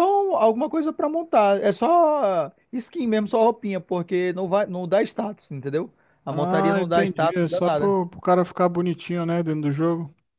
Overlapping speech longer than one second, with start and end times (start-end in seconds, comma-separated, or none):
6.3-8.0